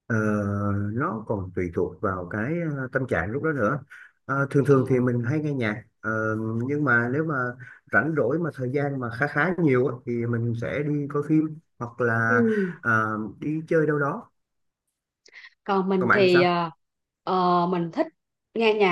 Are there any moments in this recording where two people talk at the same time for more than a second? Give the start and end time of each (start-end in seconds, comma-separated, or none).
none